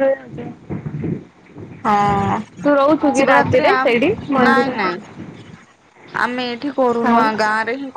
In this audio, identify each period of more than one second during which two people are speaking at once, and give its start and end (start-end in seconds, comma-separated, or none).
2.6-4.9